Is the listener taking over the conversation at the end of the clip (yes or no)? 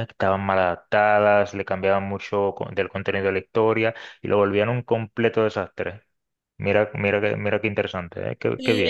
yes